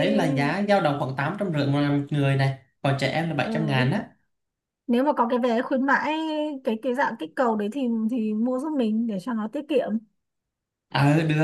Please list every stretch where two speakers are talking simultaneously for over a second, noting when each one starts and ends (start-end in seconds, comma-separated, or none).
none